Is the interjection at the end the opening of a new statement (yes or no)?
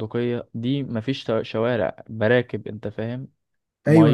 yes